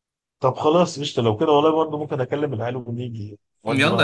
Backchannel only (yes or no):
no